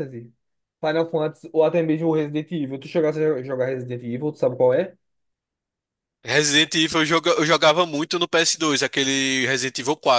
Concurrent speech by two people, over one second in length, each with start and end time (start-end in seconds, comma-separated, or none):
none